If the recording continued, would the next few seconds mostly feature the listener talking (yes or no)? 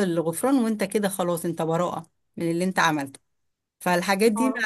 no